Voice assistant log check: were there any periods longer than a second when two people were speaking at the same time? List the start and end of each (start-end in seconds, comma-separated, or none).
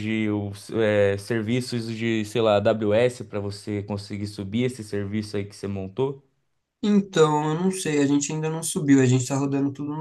none